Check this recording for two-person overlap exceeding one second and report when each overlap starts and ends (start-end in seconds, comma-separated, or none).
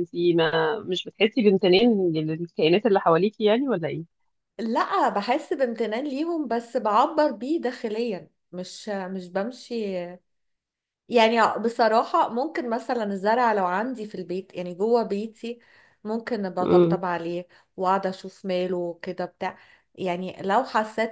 none